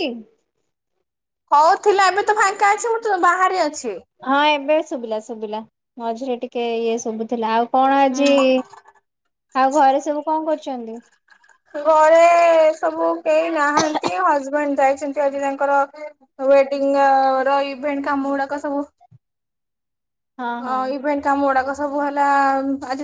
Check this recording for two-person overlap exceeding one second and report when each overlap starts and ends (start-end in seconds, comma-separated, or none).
none